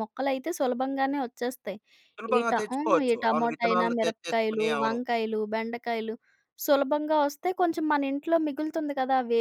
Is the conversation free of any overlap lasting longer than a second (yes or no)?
no